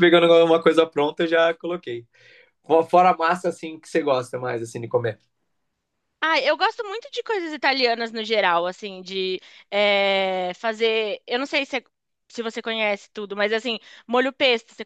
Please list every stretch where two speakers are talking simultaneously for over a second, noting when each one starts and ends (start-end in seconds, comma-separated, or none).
none